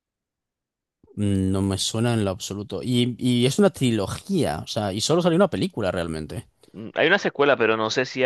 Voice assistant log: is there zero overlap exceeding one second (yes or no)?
yes